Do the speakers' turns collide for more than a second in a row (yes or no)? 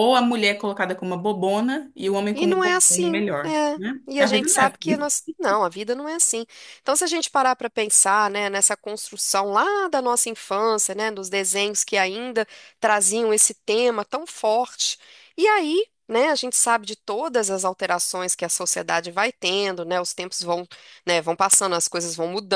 yes